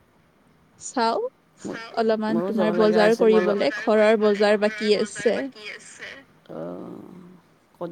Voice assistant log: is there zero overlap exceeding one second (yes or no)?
no